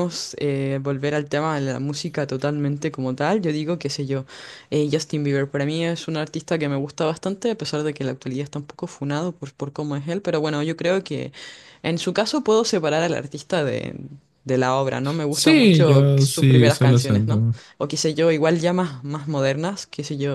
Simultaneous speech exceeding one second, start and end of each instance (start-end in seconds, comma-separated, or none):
15.3-17.4